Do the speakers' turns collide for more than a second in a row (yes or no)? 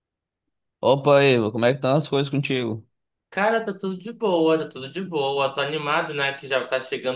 no